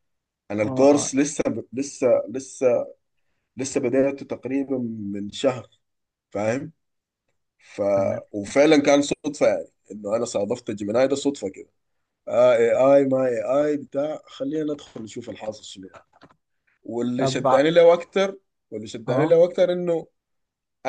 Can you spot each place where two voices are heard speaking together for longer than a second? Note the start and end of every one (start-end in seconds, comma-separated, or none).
none